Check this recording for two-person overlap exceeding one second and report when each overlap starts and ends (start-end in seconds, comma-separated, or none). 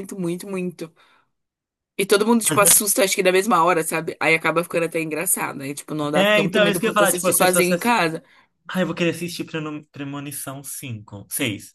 6.1-7.9